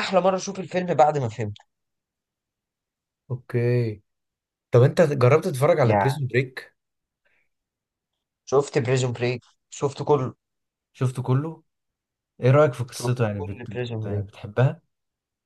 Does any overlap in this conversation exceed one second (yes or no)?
yes